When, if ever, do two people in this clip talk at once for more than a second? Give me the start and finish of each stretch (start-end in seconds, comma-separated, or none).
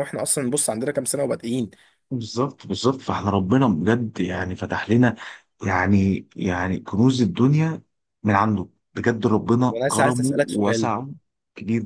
9.7-10.9